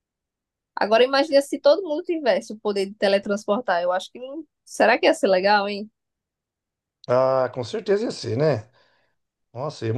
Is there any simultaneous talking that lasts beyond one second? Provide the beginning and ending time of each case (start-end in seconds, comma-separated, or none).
none